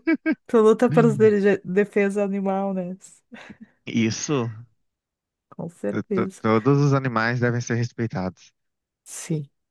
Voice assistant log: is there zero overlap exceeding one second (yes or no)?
yes